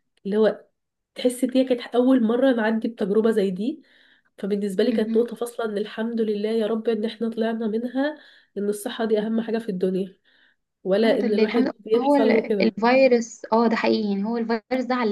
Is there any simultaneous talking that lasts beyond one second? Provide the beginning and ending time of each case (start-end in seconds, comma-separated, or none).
11.0-12.7